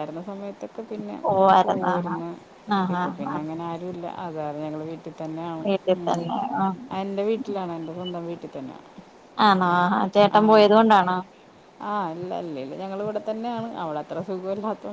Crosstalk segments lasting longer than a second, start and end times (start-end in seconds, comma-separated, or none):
none